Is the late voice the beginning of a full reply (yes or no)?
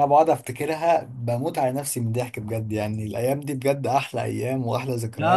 yes